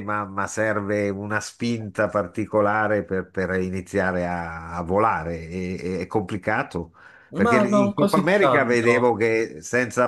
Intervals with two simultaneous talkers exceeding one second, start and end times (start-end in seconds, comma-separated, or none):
7.4-9.2